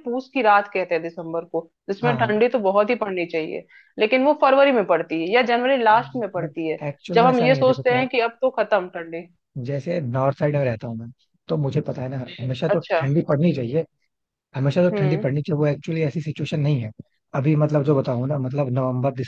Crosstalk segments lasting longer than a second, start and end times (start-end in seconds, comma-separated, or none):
6.4-8.1